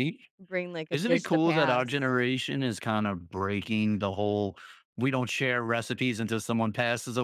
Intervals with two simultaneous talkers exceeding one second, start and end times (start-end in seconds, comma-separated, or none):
0.9-2.1